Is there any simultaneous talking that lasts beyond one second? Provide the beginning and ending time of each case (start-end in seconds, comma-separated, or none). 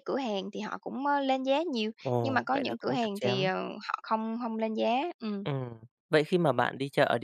2.0-3.5